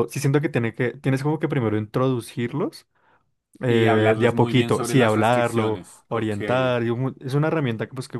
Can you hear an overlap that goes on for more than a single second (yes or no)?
yes